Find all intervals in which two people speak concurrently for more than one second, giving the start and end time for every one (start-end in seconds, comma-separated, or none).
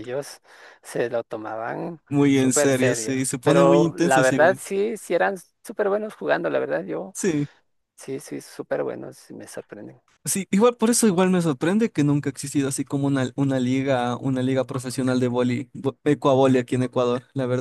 2.1-4.6